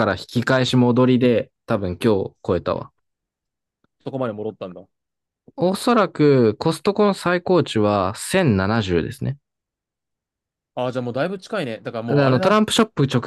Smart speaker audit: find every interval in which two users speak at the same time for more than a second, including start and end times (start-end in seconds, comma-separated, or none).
none